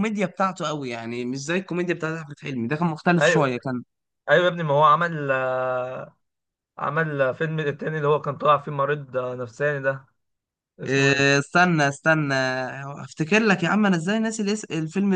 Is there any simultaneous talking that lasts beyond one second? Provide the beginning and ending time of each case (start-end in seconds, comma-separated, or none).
none